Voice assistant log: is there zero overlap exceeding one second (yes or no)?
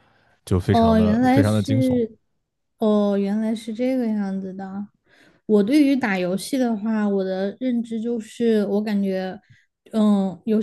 no